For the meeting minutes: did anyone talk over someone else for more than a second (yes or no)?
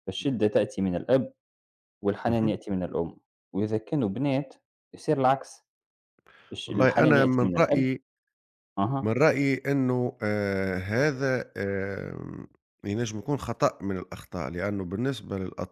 yes